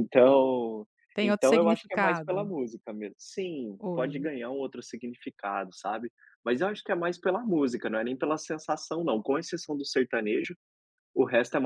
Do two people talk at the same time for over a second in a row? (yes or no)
yes